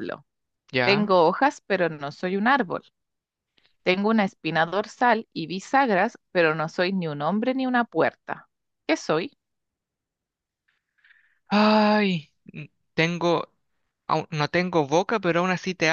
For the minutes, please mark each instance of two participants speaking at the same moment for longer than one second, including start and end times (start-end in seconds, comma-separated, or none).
none